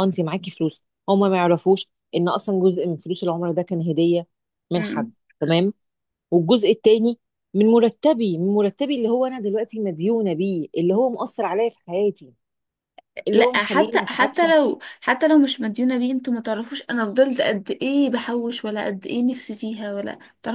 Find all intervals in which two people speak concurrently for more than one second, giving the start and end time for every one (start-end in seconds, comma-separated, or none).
13.3-14.5